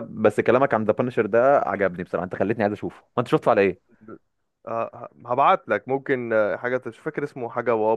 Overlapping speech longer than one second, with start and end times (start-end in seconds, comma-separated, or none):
none